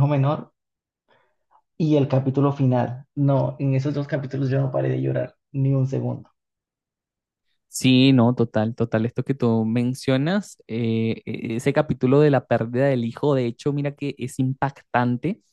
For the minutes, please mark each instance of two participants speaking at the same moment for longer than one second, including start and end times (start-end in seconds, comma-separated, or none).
none